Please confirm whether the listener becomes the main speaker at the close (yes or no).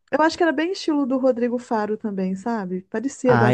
yes